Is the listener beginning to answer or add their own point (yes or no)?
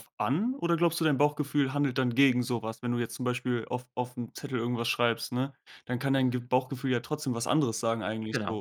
yes